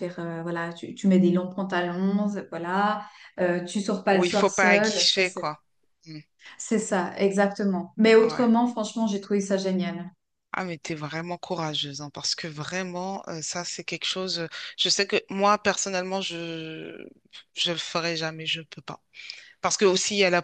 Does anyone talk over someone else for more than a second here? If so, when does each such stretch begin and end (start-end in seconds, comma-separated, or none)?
4.1-5.5